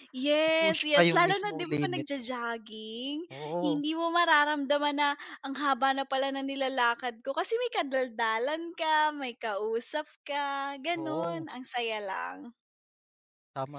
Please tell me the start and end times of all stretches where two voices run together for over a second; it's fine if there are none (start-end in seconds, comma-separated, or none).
0.6-2.3